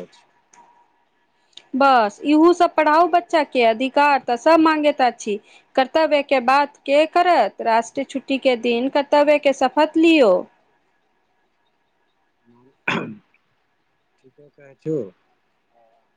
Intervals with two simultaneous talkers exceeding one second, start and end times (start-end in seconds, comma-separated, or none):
none